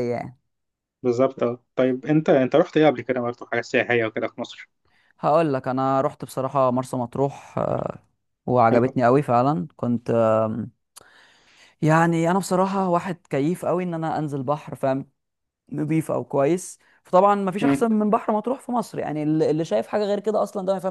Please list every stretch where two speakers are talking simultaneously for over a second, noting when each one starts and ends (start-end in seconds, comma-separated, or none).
none